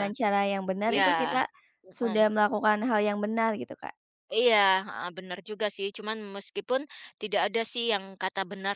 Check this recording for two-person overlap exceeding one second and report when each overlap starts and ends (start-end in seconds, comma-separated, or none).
none